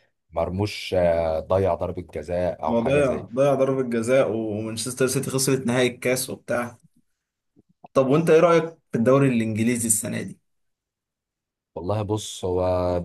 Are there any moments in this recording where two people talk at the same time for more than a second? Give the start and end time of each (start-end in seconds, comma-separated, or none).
none